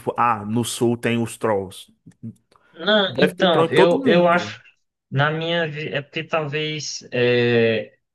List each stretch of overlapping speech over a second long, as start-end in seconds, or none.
3.2-4.6